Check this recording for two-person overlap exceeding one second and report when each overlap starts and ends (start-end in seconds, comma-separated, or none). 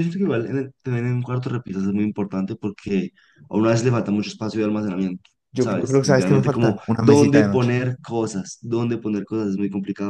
5.5-7.8